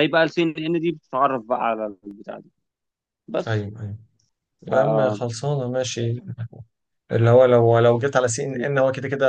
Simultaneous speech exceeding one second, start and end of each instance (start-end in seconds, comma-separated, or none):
none